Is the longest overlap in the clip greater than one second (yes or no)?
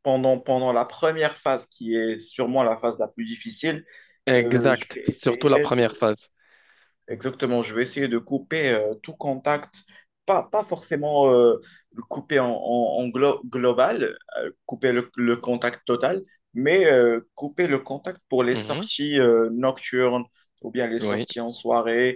yes